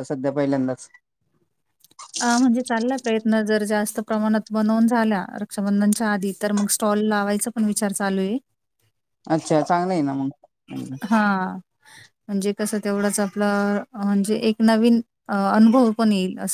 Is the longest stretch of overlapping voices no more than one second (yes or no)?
yes